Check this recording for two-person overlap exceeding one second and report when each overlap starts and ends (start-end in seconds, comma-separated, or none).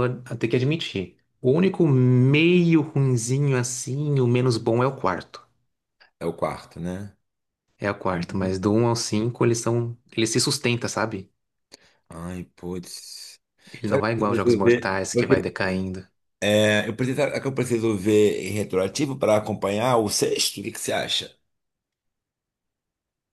13.9-15.3